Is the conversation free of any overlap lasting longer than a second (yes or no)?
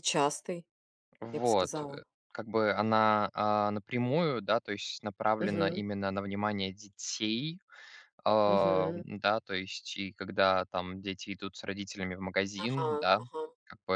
yes